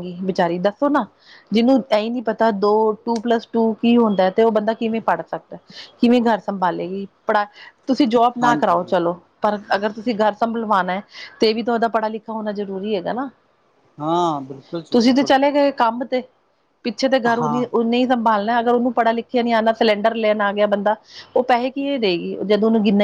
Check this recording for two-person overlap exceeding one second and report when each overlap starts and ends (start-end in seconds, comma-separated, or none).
none